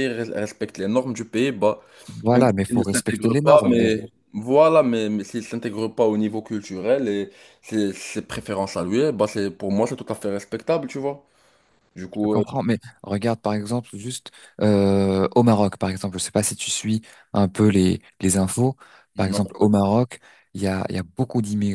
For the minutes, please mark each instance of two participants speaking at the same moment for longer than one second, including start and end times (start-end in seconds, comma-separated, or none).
2.3-4.0